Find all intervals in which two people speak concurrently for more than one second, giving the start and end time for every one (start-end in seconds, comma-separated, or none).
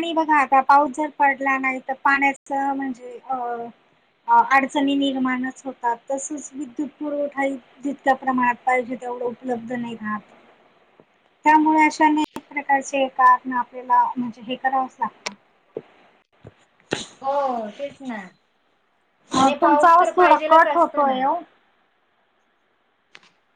19.4-21.2